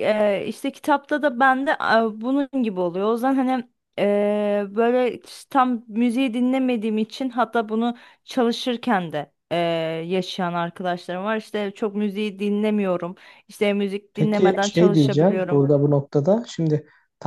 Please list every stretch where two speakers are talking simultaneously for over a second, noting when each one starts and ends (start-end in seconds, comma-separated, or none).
14.1-15.6